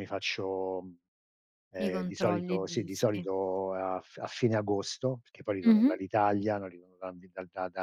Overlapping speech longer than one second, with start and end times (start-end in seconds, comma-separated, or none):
1.8-3.3